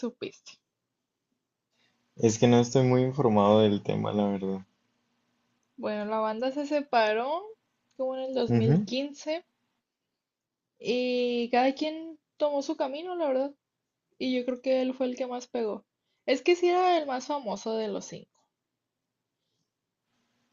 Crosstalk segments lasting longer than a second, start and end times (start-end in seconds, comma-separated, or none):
none